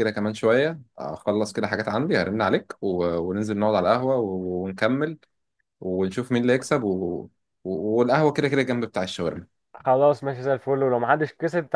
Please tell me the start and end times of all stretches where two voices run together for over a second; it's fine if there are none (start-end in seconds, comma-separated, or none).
none